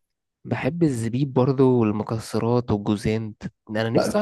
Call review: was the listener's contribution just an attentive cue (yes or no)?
no